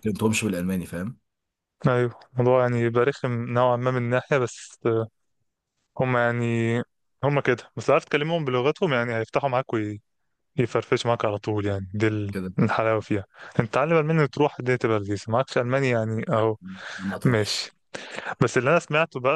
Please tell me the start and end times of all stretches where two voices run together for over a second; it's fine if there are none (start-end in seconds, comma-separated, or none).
none